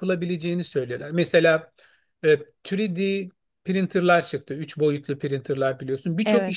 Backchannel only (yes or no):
yes